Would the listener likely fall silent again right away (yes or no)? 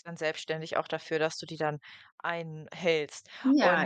no